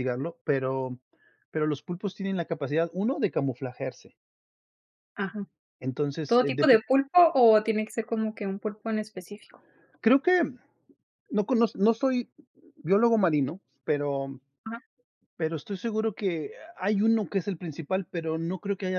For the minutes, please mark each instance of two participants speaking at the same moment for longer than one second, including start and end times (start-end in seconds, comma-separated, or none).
none